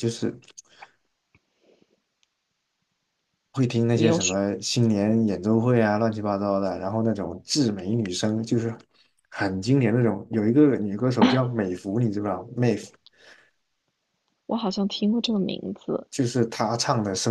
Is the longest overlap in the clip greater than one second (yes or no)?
no